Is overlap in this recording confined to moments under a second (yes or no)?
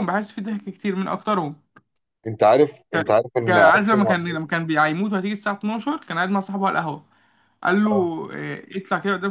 no